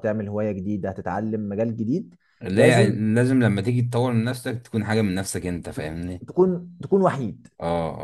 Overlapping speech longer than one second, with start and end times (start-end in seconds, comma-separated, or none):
none